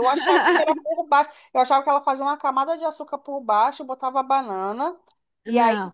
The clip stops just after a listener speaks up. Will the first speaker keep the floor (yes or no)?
yes